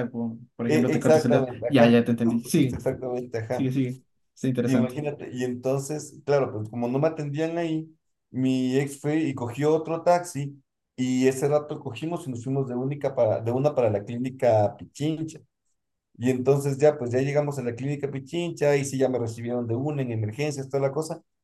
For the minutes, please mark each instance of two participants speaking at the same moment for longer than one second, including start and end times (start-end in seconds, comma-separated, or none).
0.7-2.8